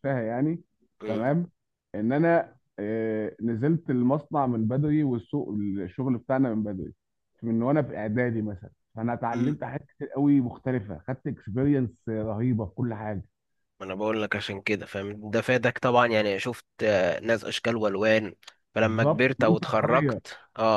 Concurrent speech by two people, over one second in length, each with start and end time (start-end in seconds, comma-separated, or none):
18.8-20.2